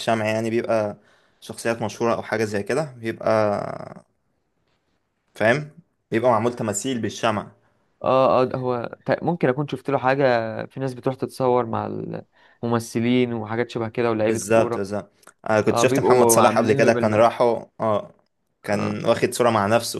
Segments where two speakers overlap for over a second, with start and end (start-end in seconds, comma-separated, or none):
15.7-17.3